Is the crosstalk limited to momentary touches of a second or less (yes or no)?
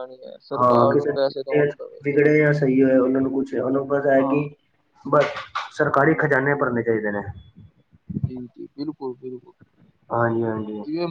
no